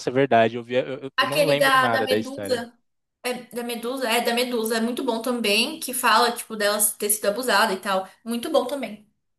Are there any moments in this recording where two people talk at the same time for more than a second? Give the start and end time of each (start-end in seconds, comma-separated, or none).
1.1-2.7